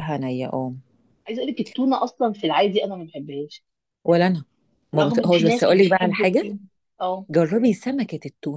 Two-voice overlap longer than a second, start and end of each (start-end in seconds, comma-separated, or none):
5.0-6.4